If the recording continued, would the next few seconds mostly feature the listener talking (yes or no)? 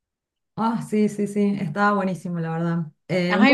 no